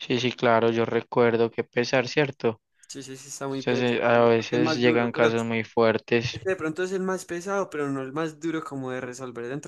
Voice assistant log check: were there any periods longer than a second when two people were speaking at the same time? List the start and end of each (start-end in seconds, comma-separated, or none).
3.5-5.3